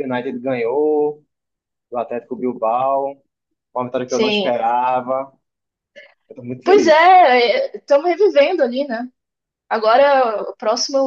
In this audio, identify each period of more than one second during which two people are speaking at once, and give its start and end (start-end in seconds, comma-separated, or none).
none